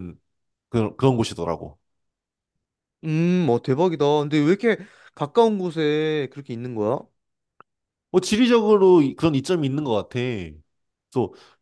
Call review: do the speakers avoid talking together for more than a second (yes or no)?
yes